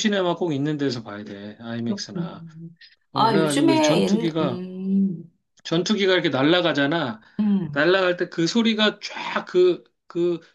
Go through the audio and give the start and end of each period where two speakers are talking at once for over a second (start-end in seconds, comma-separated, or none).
3.1-4.6